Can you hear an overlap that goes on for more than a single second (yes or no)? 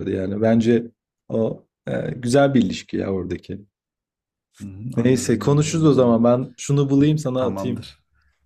yes